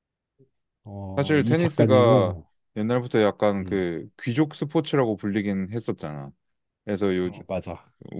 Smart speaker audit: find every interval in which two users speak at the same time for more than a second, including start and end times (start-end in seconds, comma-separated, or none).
1.1-2.4